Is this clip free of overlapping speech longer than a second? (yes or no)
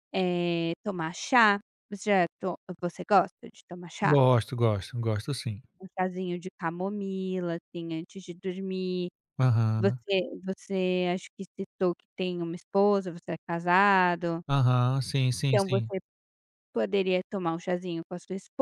yes